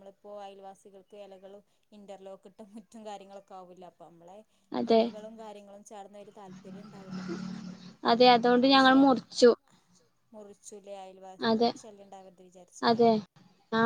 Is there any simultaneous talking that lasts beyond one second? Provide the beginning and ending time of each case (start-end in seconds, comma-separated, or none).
none